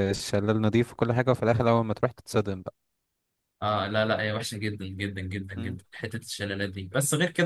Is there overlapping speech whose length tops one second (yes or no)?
no